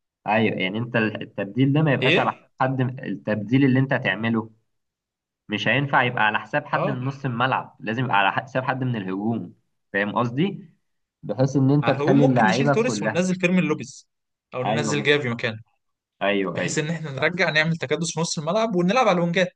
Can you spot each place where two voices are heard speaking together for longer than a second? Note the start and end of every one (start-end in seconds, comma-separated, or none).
11.8-13.3